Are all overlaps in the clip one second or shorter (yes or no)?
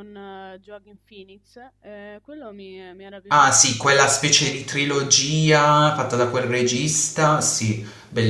no